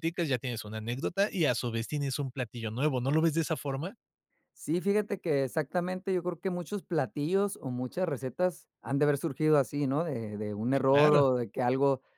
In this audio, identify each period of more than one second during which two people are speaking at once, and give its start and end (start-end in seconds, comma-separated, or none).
none